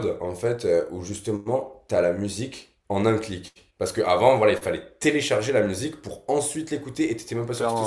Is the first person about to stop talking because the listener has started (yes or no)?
no